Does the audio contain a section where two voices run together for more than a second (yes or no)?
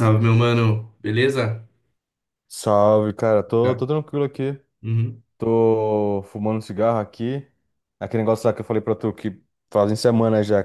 no